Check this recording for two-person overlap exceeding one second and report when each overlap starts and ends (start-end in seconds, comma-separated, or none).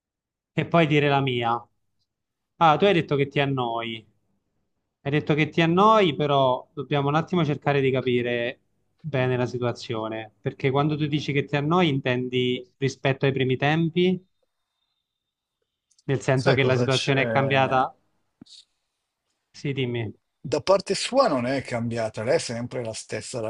16.4-17.8